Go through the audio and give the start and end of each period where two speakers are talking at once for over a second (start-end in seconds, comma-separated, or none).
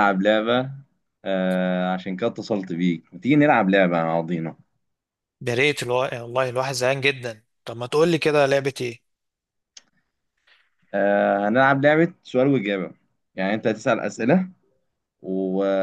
none